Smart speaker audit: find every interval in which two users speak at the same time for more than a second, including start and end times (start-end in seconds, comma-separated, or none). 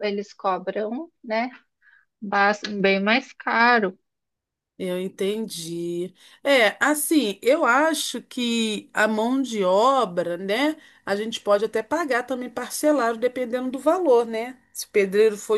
none